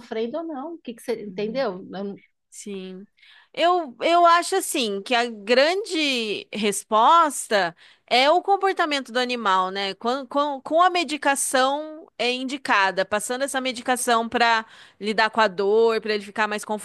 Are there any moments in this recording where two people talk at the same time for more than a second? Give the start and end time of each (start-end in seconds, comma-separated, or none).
none